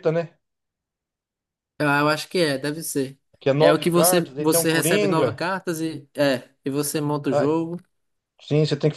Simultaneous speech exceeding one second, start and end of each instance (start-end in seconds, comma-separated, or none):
3.6-5.4